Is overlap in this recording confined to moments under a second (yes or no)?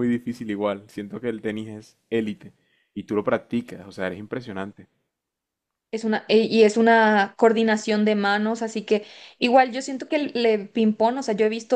yes